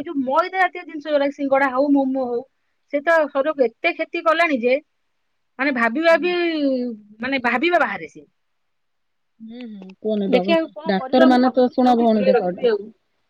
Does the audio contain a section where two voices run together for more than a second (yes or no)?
yes